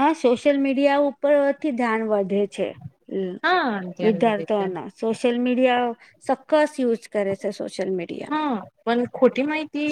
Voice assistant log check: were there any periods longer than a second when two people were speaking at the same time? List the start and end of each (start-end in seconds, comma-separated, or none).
none